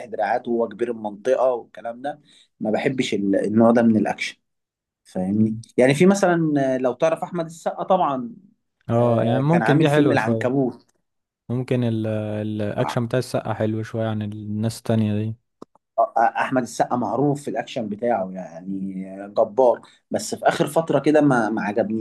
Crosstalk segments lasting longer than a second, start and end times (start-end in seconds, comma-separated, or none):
9.0-10.5